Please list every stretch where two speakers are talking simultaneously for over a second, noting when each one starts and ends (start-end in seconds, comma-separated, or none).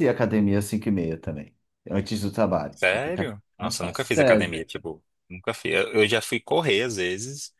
2.7-4.6